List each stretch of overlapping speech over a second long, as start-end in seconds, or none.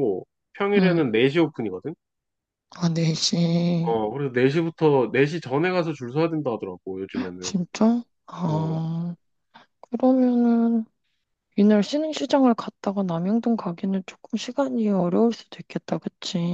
none